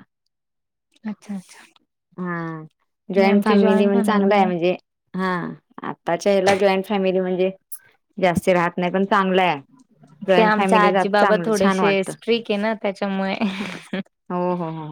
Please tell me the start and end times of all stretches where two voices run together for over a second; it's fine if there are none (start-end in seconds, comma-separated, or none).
3.2-4.4, 10.4-12.1